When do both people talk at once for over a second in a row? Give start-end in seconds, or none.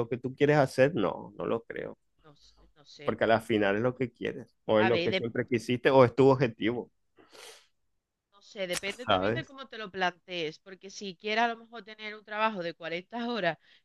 none